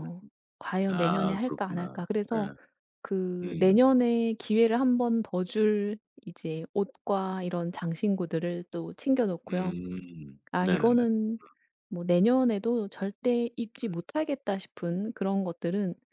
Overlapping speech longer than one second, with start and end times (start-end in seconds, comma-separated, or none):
0.9-2.5